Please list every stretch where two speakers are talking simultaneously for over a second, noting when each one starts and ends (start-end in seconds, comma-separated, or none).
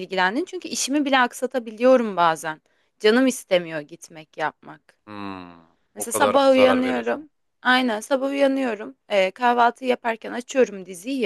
6.0-7.3